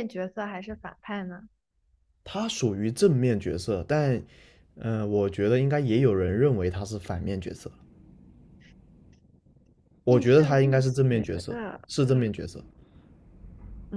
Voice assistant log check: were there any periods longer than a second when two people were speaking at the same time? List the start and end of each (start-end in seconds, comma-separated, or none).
10.1-11.8